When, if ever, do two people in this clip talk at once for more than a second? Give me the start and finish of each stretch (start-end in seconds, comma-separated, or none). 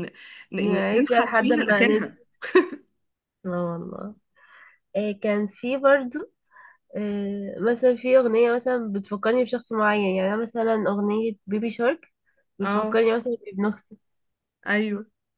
0.6-2.1